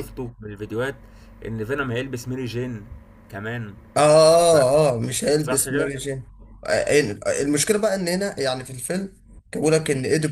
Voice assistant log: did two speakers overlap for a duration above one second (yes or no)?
no